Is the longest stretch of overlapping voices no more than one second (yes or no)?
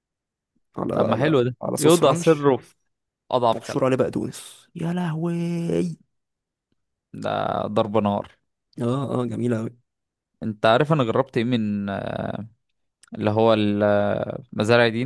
no